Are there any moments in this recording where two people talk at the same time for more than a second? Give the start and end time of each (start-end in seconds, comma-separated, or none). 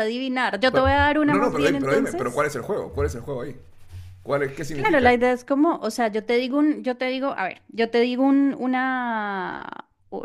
0.7-2.5